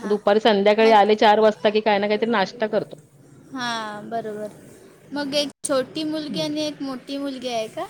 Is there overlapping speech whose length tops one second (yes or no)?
no